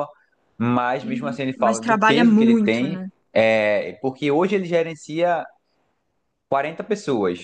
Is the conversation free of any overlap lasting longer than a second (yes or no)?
no